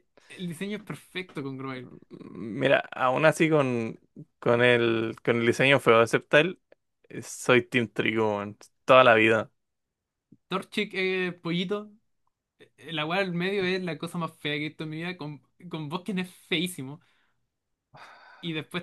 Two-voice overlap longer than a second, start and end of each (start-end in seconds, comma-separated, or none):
none